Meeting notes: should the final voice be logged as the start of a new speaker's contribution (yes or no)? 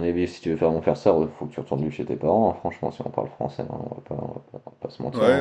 yes